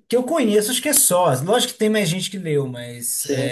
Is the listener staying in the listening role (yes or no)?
yes